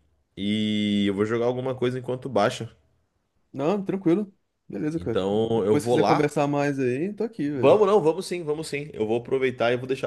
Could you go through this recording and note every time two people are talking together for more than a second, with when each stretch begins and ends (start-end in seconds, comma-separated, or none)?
5.0-6.4